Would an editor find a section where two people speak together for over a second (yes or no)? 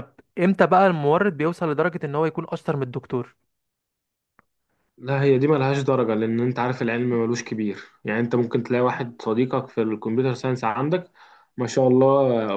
no